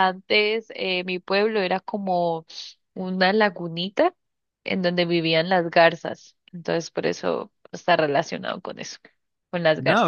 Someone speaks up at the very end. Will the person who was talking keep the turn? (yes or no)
no